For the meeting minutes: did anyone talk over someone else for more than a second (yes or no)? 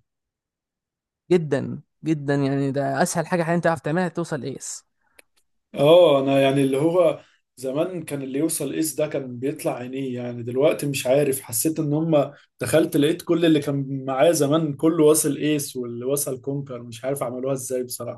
no